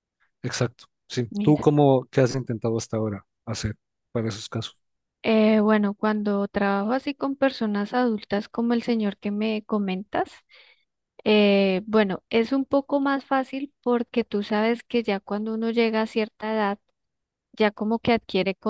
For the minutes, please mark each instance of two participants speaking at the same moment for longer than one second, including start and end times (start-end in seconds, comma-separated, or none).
none